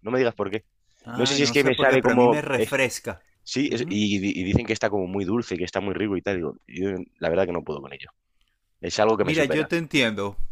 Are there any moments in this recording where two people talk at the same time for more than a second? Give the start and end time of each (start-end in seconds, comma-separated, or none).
1.1-2.7